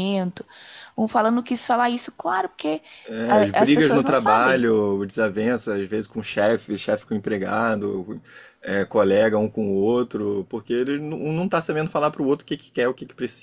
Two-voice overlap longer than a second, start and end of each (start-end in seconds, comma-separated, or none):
3.2-4.7